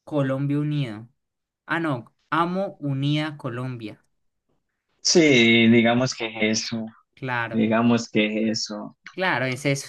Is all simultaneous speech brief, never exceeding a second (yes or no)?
yes